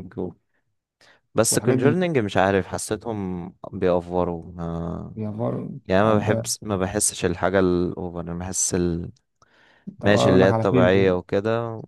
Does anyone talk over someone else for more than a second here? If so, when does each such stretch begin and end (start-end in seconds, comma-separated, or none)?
10.0-11.2